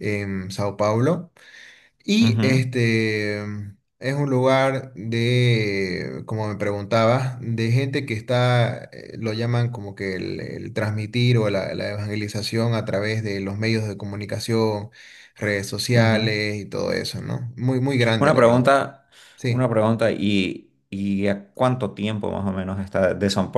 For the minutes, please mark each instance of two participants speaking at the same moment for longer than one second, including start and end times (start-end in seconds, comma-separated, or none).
none